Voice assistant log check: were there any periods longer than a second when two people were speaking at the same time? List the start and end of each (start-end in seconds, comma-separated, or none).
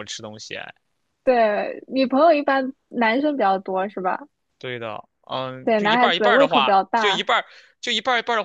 5.6-7.3